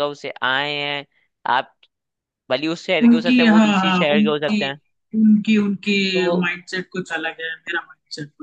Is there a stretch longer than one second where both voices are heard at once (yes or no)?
yes